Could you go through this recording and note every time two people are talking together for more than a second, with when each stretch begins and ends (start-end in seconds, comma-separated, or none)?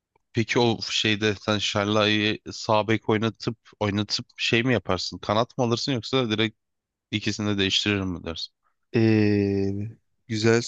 none